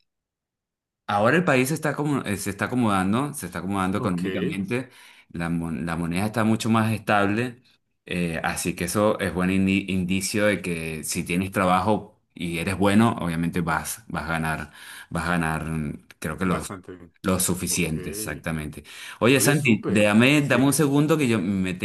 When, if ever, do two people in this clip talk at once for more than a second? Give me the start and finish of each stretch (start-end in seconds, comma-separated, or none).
19.3-20.8